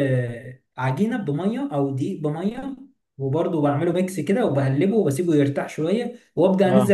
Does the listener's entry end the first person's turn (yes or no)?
no